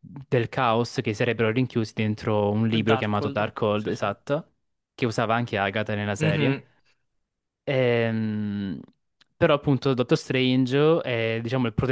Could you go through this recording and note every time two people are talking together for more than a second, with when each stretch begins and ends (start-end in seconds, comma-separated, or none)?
2.7-4.0